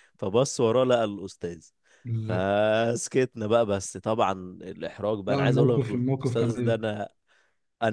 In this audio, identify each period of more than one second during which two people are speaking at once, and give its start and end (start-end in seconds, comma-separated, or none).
5.3-6.8